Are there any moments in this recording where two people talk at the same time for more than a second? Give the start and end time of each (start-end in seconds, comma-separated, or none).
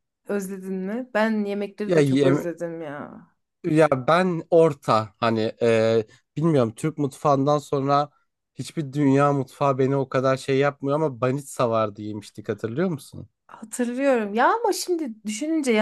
none